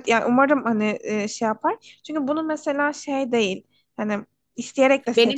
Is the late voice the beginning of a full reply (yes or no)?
yes